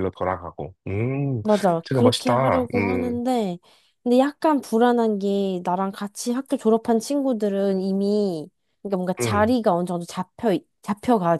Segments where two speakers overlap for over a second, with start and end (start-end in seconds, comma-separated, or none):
1.9-3.2